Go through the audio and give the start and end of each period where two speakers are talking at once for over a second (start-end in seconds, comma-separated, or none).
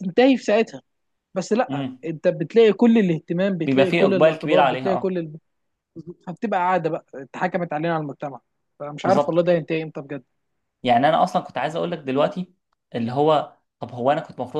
3.6-5.2